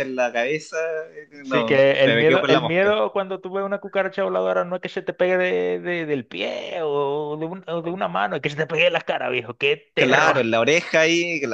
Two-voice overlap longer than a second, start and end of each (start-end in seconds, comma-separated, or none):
1.4-3.0